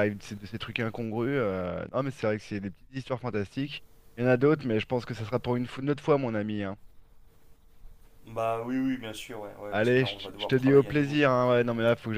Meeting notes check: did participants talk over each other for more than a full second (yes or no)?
yes